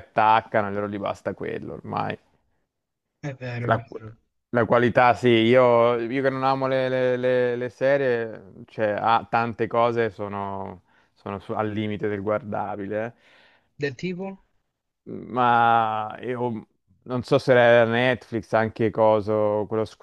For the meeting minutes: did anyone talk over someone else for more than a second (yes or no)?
no